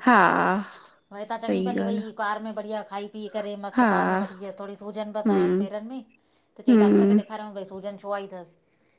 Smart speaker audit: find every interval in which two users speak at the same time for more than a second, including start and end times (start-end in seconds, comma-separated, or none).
none